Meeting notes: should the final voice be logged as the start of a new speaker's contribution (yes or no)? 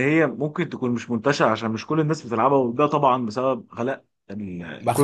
yes